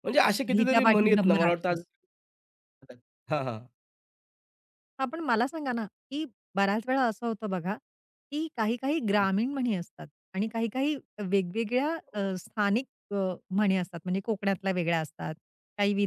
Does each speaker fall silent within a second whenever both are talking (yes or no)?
no